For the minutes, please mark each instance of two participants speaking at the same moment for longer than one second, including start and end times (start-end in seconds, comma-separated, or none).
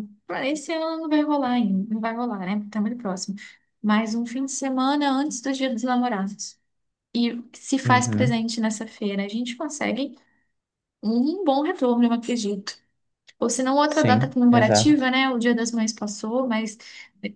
13.8-15.1